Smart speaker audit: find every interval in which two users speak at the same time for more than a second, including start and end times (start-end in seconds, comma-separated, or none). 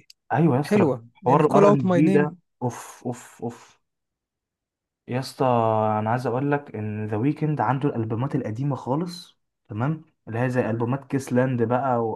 0.6-2.3